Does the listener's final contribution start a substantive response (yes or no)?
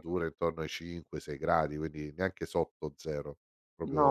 yes